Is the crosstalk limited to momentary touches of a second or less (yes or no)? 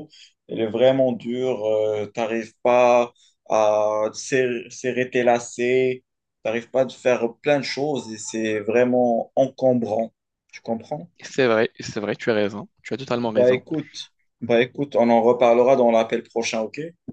yes